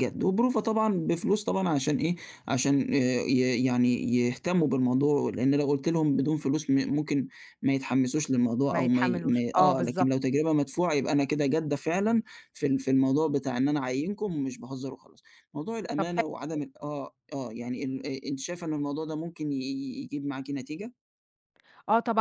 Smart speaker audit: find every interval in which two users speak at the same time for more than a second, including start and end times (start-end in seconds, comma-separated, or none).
8.7-10.1